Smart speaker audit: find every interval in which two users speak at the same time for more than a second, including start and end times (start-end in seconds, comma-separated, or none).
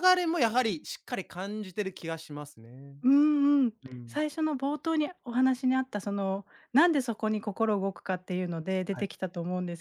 none